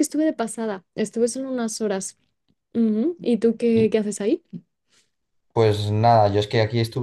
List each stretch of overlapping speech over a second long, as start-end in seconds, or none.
none